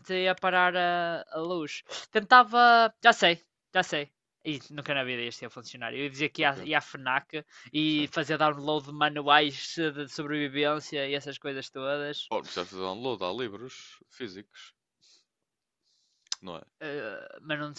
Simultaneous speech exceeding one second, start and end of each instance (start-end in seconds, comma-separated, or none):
none